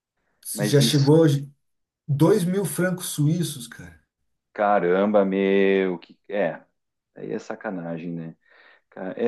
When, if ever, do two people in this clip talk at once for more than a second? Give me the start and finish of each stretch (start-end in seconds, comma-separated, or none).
none